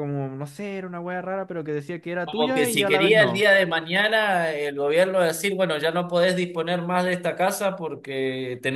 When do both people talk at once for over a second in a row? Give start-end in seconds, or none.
2.2-3.5